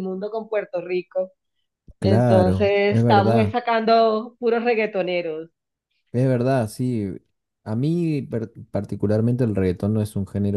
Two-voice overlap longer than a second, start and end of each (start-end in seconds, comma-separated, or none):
2.0-3.5